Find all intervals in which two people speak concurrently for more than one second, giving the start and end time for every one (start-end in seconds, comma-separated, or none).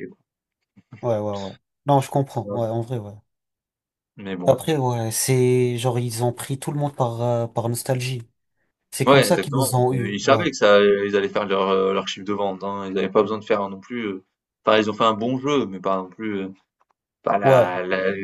9.1-10.5